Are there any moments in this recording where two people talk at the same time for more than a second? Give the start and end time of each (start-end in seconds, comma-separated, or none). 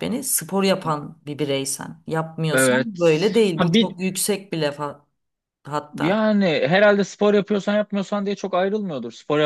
none